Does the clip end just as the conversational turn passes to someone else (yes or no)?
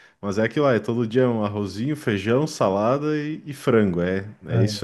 no